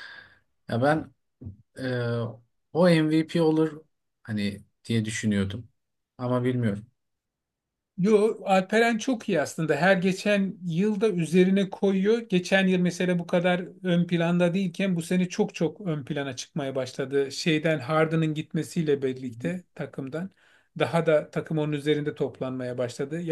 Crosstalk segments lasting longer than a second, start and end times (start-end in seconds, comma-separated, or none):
none